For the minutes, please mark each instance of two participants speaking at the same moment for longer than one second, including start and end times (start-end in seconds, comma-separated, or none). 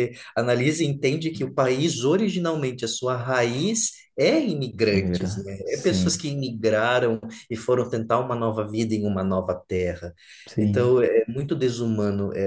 4.9-6.3